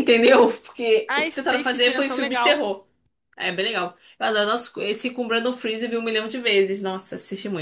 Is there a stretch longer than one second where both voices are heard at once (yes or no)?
yes